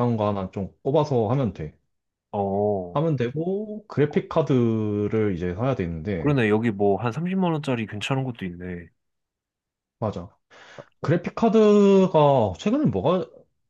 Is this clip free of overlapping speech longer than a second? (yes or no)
yes